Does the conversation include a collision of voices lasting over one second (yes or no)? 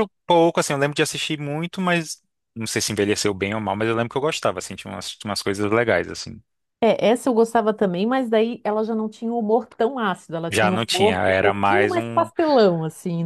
yes